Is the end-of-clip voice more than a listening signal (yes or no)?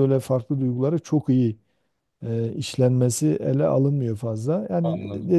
no